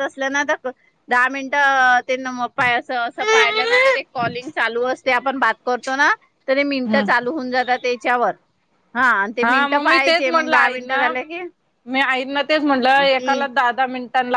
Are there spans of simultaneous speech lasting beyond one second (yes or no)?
yes